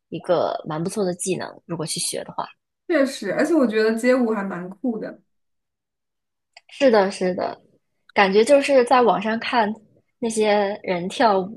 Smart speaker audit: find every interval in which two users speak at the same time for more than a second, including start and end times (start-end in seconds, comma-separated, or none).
none